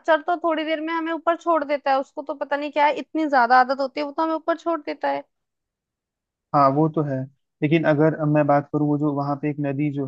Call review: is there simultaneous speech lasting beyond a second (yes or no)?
no